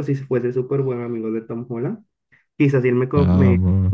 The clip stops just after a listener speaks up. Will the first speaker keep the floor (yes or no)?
yes